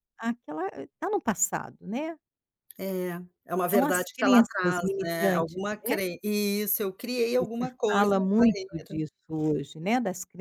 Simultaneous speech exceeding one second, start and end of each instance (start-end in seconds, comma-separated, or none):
3.7-6.0, 7.4-9.0